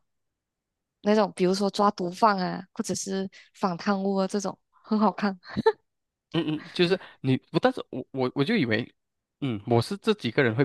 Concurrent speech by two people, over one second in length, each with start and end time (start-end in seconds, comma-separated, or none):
none